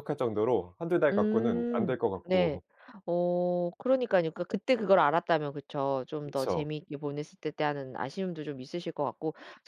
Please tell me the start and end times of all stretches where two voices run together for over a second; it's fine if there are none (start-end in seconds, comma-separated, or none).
1.1-2.6